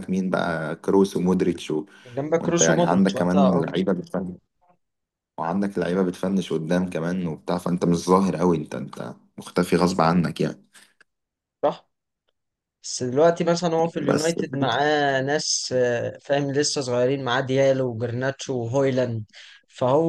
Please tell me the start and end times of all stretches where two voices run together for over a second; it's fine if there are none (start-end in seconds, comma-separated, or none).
2.4-3.6